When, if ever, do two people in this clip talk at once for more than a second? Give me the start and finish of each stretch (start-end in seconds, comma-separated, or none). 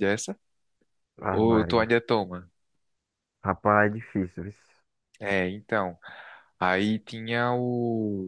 none